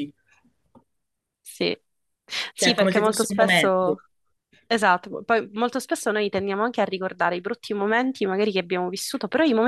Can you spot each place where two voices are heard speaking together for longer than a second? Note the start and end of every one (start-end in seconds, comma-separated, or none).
2.5-4.0